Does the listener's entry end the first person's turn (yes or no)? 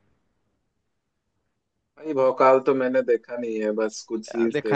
yes